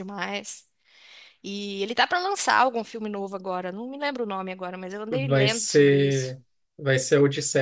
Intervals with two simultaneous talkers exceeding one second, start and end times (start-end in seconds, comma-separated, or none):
5.1-6.3